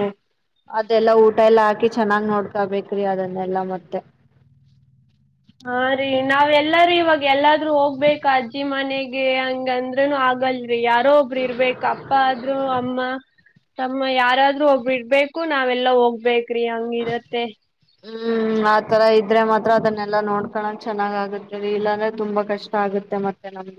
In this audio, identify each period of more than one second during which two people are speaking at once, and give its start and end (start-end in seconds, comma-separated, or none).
none